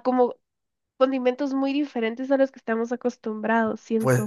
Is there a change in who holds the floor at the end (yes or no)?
yes